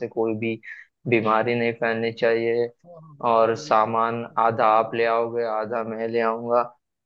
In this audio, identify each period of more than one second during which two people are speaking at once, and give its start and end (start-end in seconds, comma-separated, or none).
3.3-5.1